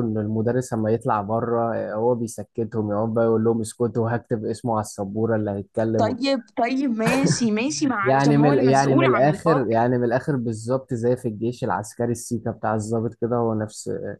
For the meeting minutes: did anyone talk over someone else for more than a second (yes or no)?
yes